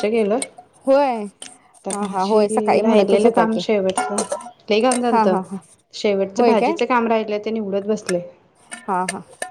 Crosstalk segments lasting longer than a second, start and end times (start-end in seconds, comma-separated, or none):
1.9-3.6